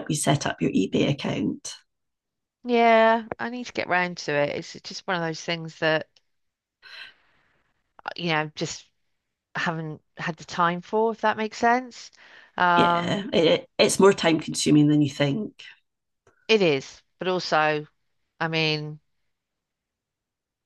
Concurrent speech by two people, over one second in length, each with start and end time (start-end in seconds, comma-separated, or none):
none